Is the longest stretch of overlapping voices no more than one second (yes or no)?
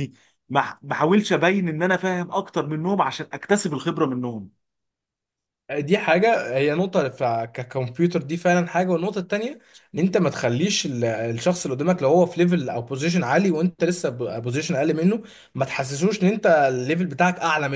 yes